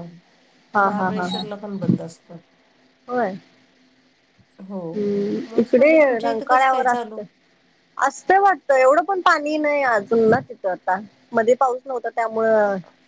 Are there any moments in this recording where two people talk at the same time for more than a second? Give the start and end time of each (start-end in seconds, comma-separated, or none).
5.4-7.2